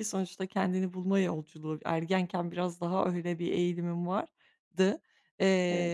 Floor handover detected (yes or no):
no